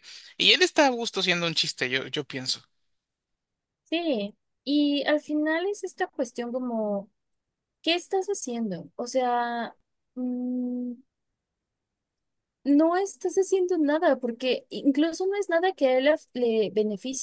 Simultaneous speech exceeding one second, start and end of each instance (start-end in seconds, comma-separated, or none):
none